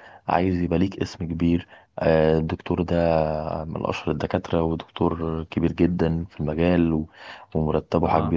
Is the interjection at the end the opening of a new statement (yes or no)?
no